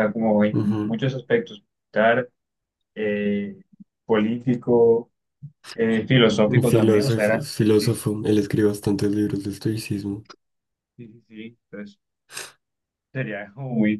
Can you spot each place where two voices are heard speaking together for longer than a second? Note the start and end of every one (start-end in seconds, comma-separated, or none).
6.5-8.0